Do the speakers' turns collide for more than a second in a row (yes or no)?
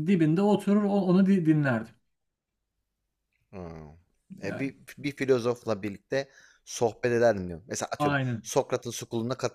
no